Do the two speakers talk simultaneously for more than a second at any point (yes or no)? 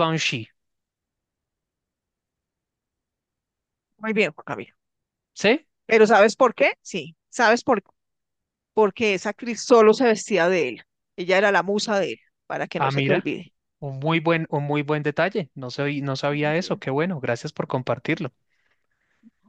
no